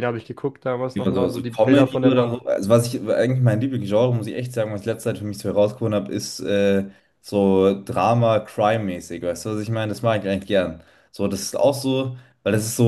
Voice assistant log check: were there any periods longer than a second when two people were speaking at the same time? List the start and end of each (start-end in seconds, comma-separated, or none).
0.9-2.4